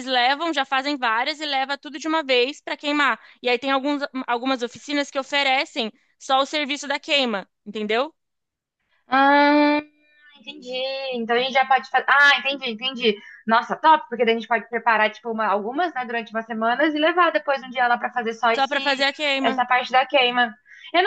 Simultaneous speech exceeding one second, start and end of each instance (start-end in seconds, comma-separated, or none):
none